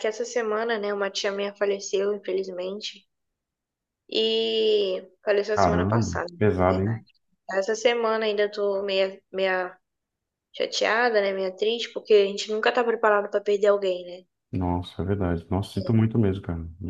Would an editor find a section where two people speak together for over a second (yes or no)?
yes